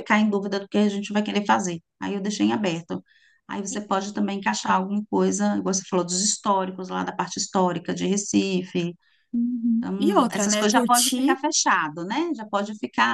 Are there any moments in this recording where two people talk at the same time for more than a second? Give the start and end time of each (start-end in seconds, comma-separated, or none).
9.8-11.4